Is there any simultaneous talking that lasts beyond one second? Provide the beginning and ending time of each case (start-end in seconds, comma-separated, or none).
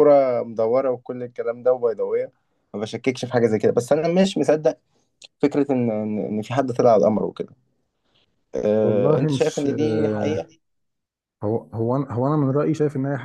8.8-10.4